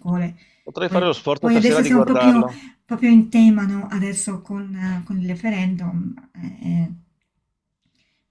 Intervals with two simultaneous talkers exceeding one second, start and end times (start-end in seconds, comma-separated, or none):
0.8-2.5